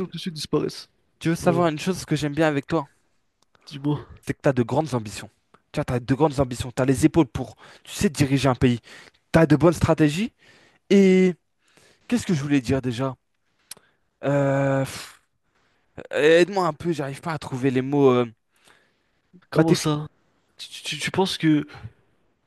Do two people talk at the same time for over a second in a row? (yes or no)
no